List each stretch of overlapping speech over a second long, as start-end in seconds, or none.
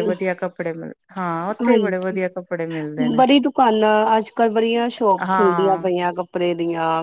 none